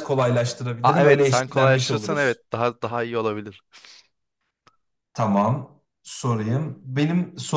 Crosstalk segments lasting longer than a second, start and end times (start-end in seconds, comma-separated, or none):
0.8-2.4